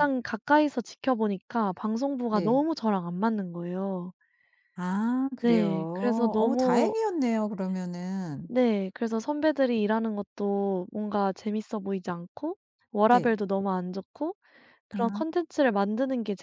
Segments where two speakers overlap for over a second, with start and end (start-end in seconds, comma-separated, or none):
5.4-6.9